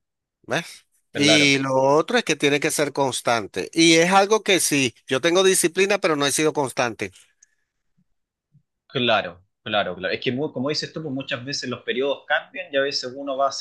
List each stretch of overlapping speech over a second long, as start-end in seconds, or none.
none